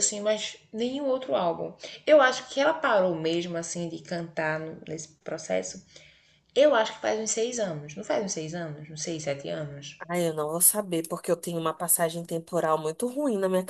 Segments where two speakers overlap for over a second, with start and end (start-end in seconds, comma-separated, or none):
none